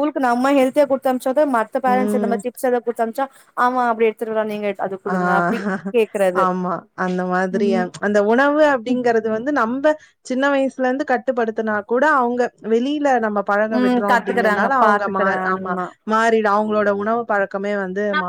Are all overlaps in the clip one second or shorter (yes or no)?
no